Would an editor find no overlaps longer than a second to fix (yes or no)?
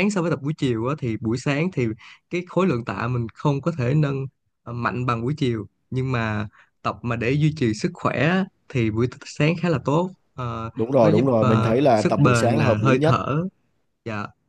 no